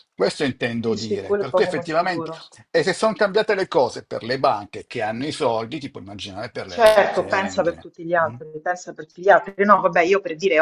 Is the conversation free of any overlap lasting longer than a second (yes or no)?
no